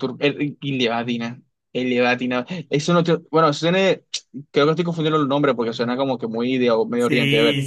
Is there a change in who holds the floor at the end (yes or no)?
yes